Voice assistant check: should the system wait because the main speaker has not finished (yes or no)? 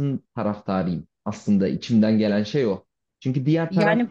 yes